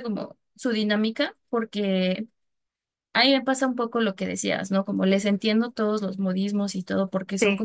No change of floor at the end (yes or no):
yes